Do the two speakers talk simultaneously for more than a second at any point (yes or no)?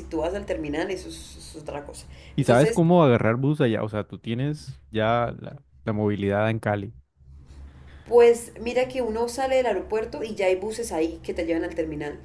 no